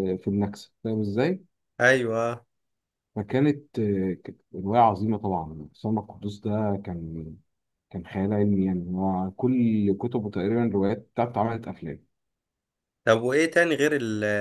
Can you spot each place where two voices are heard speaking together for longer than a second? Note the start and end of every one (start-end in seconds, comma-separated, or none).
none